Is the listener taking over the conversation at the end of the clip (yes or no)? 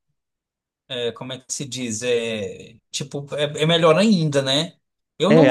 yes